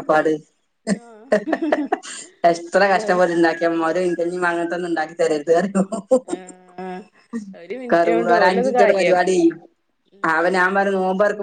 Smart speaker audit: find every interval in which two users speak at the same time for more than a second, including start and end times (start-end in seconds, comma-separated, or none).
7.9-9.4